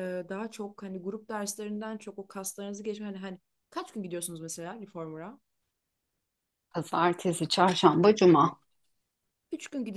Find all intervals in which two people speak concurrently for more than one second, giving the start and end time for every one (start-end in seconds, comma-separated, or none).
none